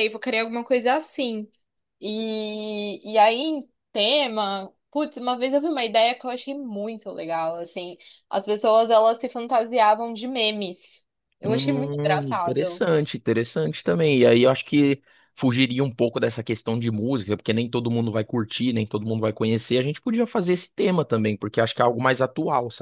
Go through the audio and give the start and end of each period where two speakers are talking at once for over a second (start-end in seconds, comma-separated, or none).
11.4-12.8